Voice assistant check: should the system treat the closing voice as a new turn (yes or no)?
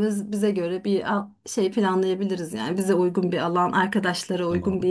no